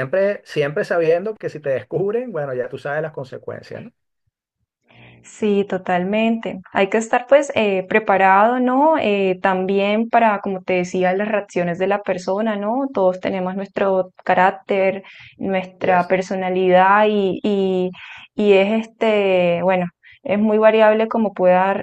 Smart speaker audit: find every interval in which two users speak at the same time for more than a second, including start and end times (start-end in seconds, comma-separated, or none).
none